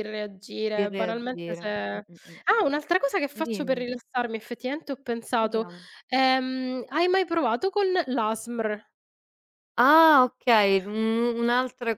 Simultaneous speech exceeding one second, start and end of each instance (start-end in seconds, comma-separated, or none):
0.7-2.4